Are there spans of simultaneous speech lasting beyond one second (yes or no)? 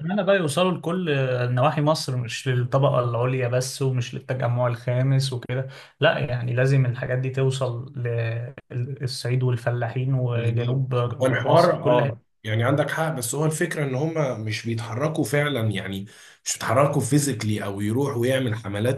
yes